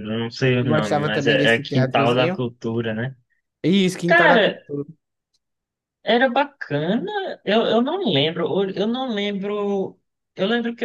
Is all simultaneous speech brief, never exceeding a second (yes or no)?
no